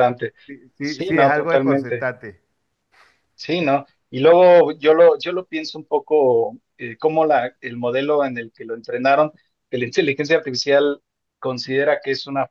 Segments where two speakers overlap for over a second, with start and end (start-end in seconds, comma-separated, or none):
0.8-2.1